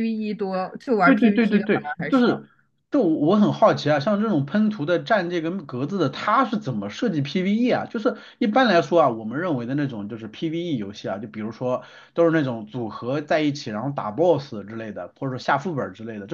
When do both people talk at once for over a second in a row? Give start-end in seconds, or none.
1.0-2.4